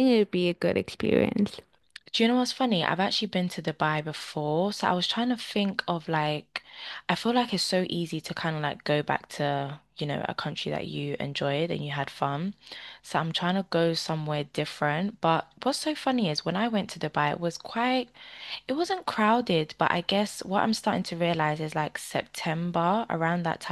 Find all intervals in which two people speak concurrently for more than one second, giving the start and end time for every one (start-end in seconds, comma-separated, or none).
none